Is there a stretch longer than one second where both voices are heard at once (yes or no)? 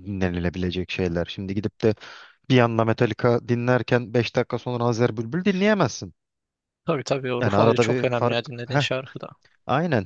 yes